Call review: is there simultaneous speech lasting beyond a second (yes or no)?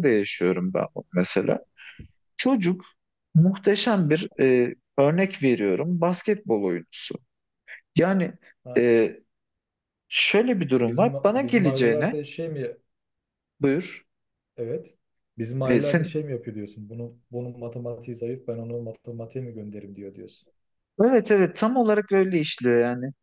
yes